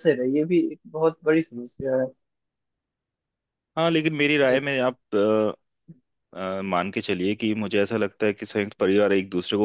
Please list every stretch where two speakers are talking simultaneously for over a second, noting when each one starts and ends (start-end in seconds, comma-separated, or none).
none